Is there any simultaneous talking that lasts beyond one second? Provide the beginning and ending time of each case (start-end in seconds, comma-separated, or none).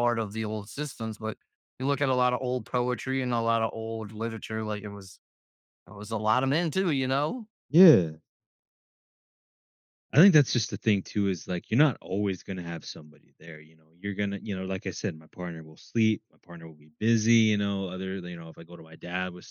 none